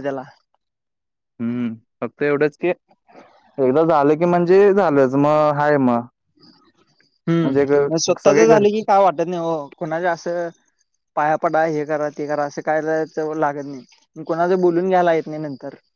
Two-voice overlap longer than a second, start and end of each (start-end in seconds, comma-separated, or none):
7.4-8.9